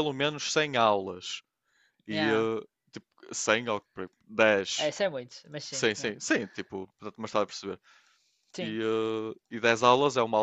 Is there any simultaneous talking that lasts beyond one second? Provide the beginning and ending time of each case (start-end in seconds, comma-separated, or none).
none